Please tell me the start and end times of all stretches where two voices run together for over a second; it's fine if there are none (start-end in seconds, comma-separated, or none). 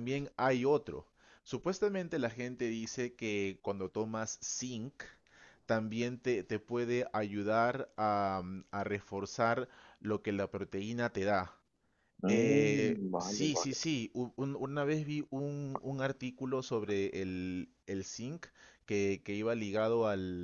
12.3-13.8